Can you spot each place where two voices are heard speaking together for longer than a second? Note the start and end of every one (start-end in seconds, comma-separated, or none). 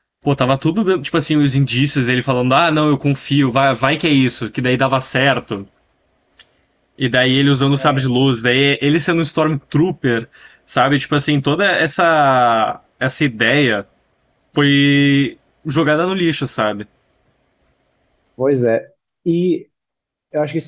none